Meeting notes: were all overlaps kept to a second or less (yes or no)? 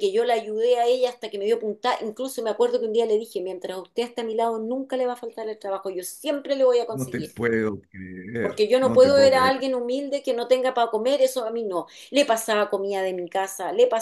no